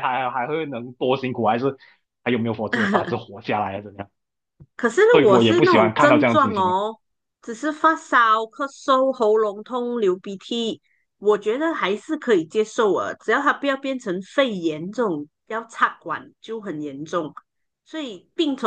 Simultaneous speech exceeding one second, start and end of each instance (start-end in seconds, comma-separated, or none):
5.1-6.7